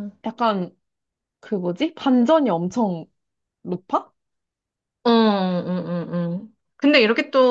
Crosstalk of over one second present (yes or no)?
no